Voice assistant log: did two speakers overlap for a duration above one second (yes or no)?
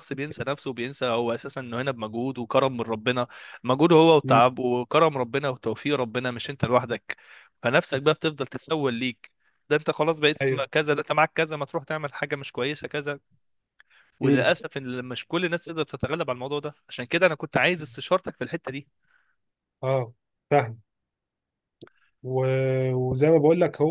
no